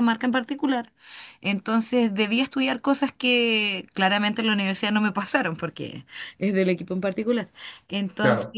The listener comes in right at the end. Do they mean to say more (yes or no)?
no